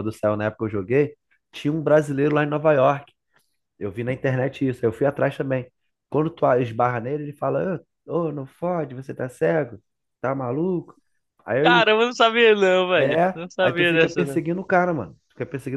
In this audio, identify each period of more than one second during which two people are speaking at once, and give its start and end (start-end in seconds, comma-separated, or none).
13.0-14.4